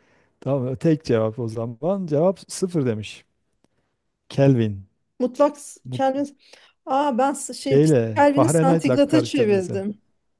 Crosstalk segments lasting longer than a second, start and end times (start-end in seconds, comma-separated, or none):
7.6-9.8